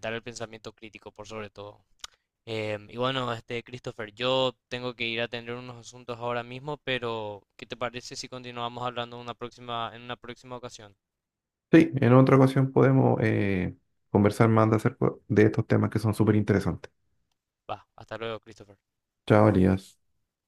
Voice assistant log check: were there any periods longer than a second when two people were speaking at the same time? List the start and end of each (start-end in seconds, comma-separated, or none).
none